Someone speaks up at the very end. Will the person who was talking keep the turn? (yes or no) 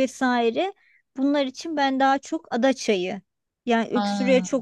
yes